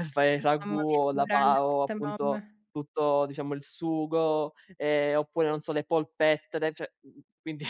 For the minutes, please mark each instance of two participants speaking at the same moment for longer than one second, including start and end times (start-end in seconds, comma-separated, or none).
0.6-2.4